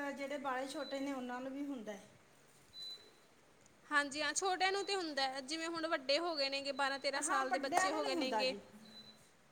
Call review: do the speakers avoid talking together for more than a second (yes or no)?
no